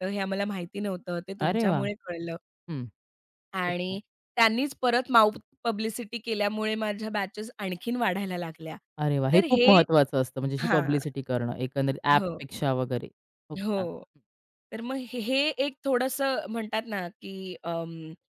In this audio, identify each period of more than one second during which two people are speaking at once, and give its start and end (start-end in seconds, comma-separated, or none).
none